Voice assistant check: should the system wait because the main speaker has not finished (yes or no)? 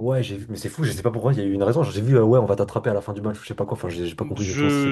no